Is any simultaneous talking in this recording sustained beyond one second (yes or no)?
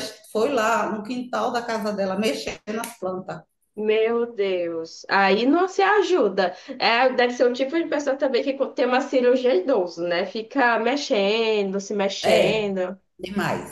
no